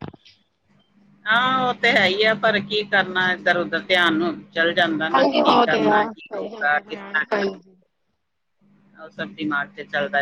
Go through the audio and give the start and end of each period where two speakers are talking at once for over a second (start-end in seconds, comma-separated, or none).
5.9-7.6